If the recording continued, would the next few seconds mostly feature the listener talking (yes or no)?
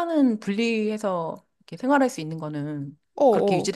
yes